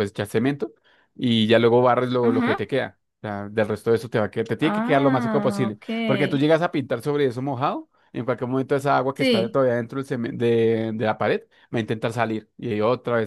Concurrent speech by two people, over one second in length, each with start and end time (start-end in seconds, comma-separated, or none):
4.6-5.8